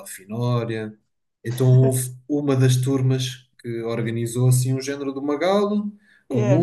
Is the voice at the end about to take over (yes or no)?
no